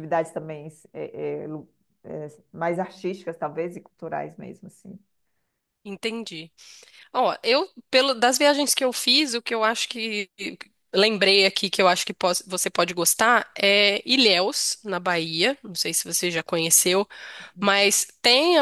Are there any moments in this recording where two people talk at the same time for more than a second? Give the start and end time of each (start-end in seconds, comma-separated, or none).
none